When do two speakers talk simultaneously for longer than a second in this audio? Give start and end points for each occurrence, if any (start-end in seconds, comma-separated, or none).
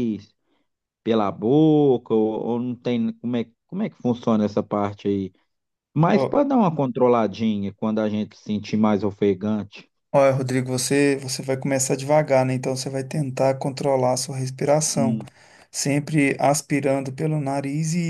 none